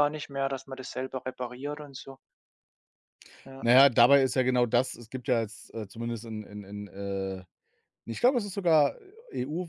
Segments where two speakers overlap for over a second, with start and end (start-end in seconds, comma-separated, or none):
none